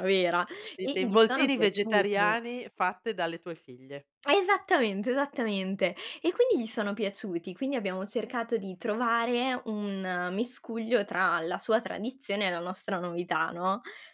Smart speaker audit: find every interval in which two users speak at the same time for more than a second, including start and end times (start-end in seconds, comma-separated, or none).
0.8-2.4